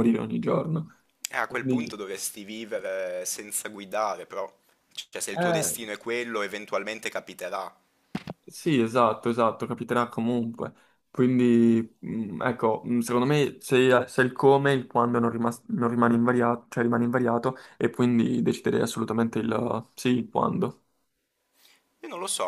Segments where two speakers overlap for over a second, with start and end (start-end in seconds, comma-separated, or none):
none